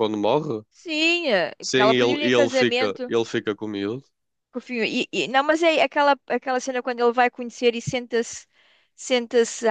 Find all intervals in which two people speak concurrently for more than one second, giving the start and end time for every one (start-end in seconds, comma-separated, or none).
1.6-3.1